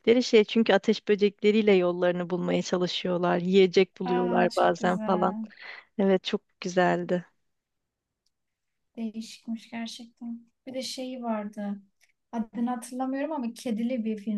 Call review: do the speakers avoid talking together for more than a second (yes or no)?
no